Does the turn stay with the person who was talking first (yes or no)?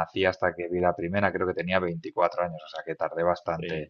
yes